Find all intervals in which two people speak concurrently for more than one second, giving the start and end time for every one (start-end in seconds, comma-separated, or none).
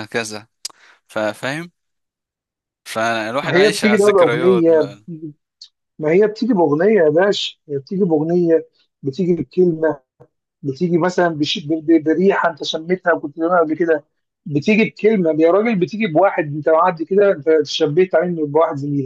3.4-5.0